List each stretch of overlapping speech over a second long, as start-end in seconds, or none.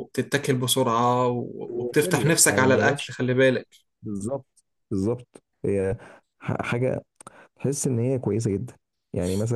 1.7-3.2